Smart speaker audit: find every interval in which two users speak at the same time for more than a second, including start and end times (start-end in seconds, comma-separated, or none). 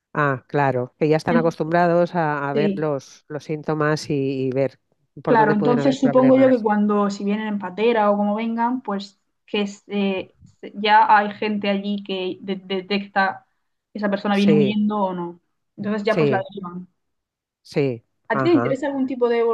5.2-6.7